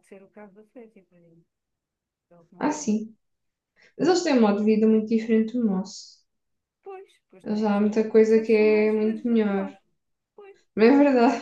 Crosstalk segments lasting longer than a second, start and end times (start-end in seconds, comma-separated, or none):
7.4-9.7